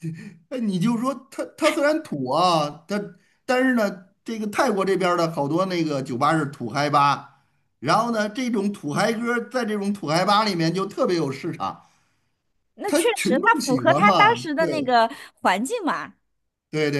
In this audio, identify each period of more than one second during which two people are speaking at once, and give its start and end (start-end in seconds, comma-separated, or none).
12.8-14.9